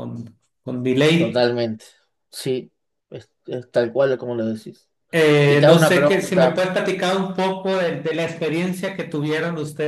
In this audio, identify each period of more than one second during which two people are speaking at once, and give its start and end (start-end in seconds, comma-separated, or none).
5.5-6.7